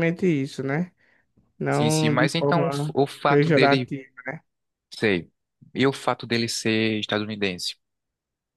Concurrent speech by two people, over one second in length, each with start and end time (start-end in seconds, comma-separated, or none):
1.7-3.9